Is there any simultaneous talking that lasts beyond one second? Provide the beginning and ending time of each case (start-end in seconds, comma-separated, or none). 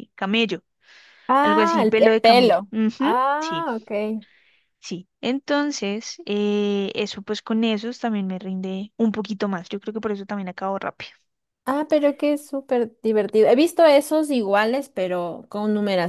1.4-3.7